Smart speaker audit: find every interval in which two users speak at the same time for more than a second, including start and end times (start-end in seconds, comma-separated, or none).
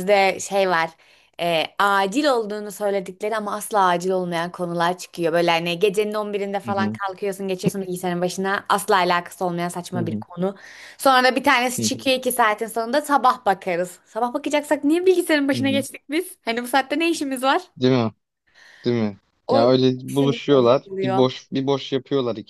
19.5-21.3